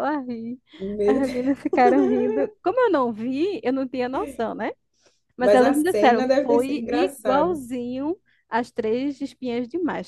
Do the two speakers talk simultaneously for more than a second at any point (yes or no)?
yes